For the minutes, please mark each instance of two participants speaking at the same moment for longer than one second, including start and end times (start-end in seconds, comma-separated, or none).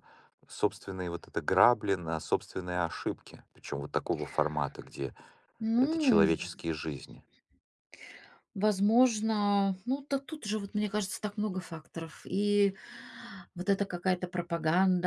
none